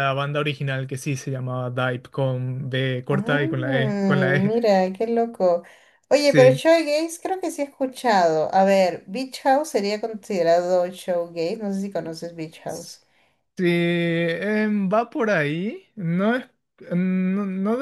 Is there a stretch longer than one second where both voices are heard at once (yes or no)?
yes